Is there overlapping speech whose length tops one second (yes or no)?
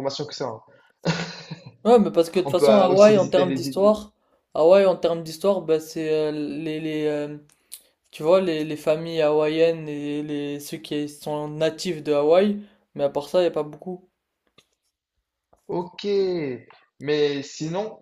yes